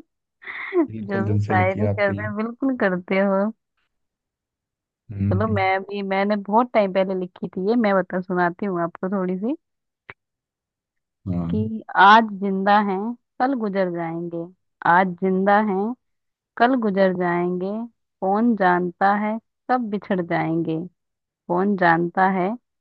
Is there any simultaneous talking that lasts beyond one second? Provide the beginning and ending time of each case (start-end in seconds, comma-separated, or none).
0.9-2.3